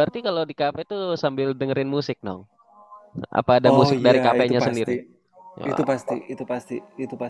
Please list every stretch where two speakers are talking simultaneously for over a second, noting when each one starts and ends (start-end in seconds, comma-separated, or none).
3.7-5.0